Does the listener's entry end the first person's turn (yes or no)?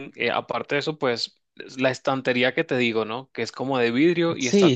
yes